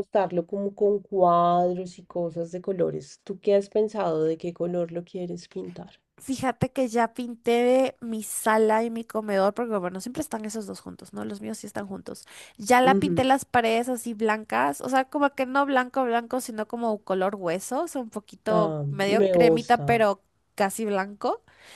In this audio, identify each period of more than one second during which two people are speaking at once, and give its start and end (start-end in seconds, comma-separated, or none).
18.5-20.1